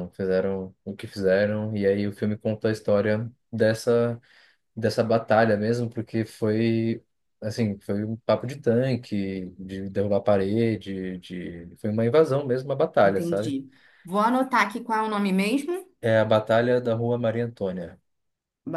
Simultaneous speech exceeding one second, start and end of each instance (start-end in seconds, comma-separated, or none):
none